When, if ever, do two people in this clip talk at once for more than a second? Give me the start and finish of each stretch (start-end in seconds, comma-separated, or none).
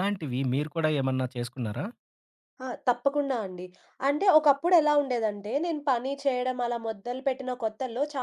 none